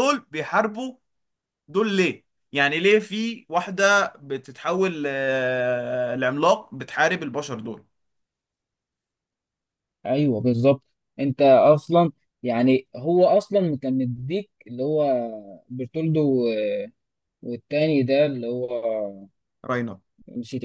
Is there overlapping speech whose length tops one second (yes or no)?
no